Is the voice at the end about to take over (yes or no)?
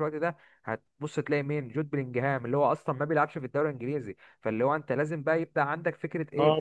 no